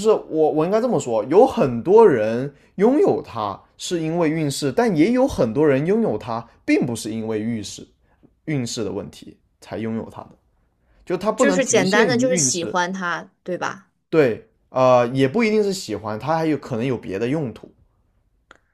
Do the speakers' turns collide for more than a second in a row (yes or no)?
yes